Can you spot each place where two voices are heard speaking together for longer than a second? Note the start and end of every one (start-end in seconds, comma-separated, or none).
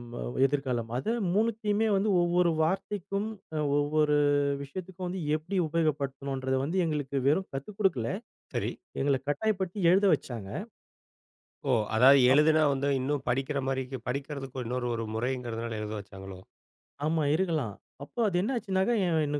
none